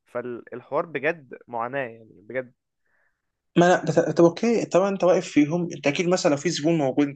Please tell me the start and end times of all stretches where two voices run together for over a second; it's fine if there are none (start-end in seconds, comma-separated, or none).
none